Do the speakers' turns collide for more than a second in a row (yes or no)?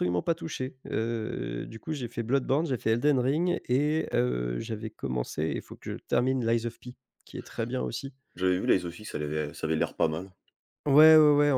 no